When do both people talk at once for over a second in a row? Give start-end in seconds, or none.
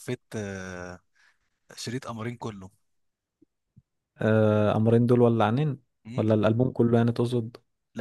none